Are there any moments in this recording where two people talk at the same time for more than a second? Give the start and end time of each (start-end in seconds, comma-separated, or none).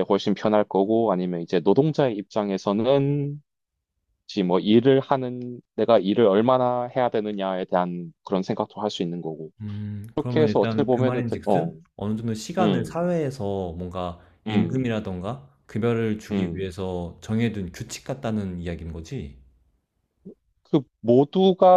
10.1-11.7